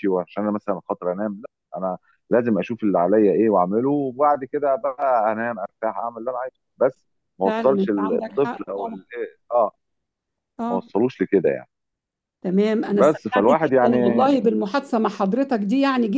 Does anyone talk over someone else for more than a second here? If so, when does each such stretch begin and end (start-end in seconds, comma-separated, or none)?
7.5-9.0, 12.9-14.3